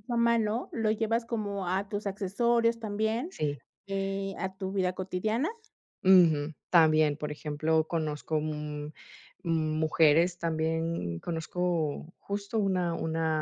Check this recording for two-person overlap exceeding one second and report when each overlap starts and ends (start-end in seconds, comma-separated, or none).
none